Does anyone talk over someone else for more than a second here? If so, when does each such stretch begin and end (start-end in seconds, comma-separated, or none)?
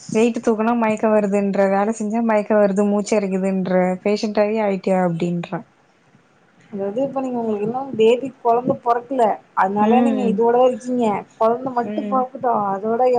none